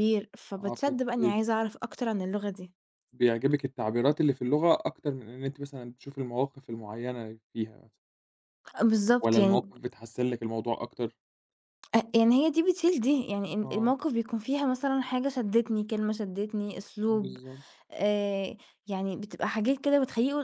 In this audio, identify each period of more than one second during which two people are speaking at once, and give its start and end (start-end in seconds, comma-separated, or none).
none